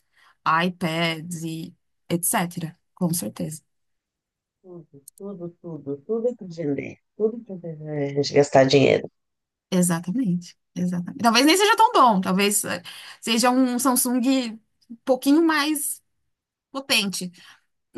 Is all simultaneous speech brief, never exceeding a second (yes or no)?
yes